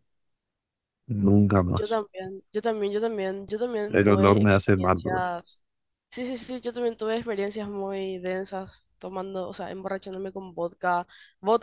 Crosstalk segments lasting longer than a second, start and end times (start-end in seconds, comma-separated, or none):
3.9-5.2